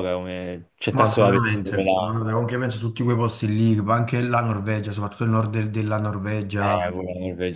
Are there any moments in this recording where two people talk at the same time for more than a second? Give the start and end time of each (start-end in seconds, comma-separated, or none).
0.9-2.2